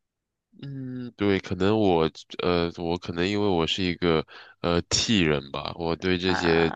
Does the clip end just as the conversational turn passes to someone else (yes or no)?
no